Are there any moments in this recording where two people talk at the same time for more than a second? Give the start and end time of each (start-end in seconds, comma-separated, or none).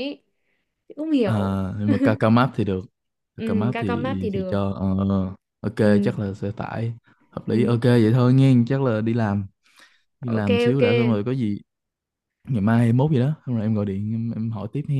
3.4-4.6